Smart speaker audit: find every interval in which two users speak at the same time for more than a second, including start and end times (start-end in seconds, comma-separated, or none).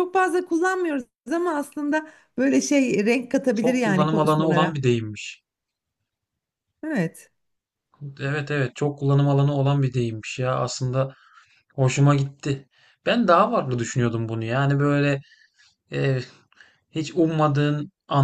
3.5-4.8